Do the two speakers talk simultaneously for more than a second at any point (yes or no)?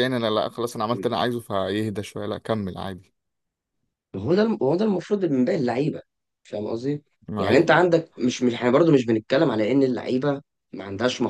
no